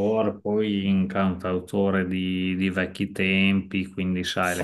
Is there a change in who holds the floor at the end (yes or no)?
no